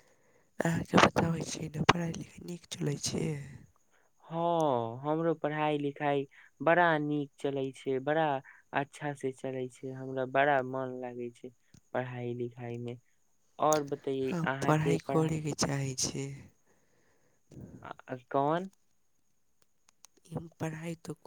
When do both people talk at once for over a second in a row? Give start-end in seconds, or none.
none